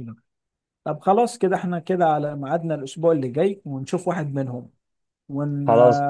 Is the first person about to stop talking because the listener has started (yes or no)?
no